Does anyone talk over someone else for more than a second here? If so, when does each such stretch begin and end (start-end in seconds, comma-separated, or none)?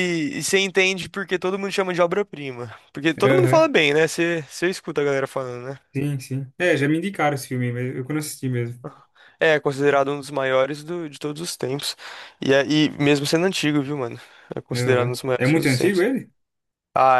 14.7-16.1